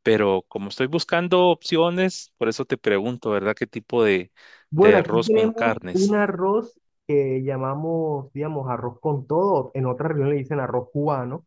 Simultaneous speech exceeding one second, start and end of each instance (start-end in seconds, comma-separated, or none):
4.7-6.2